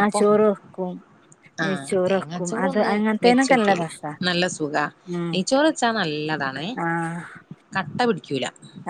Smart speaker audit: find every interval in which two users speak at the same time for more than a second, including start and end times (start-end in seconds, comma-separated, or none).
1.6-3.9